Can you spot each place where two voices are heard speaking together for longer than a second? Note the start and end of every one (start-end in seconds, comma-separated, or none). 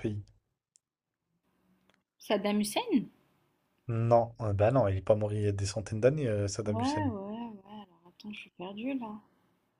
none